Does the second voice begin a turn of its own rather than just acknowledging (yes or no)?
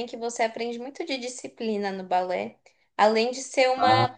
no